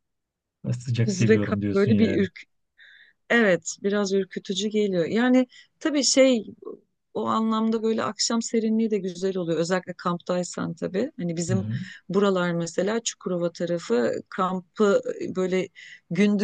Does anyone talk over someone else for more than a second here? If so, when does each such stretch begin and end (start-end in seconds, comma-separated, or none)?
1.1-2.2